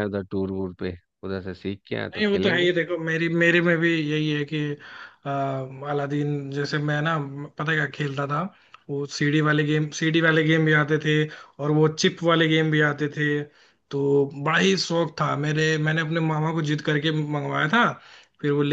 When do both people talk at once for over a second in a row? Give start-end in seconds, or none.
none